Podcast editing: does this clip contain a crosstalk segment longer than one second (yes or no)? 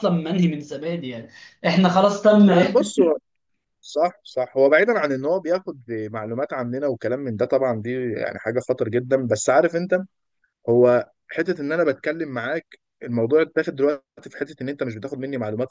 no